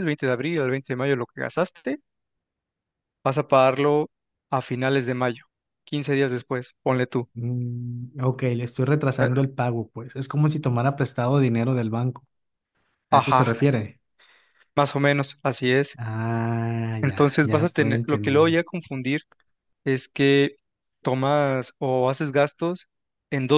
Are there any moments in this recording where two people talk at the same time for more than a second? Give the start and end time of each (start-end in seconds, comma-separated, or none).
17.0-18.6